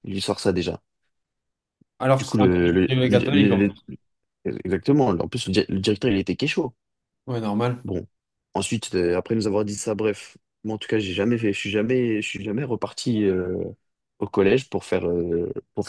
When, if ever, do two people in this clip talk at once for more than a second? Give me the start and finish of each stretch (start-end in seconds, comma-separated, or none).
2.2-3.7